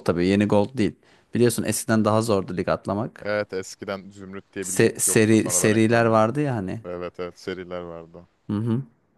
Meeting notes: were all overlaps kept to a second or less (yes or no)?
no